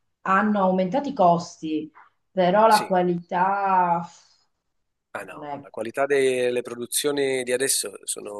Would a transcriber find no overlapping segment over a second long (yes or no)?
yes